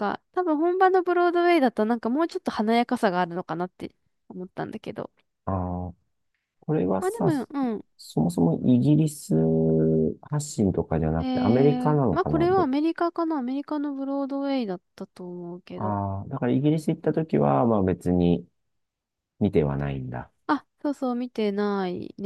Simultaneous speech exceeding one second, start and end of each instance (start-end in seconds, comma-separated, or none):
11.2-12.4